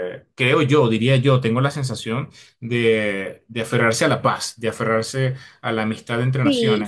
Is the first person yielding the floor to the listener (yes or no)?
yes